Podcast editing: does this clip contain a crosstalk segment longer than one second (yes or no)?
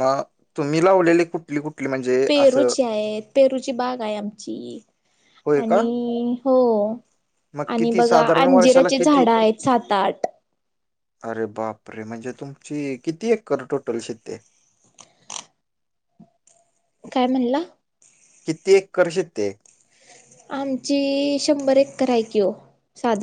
yes